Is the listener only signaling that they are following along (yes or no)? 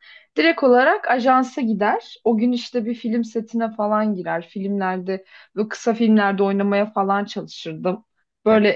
yes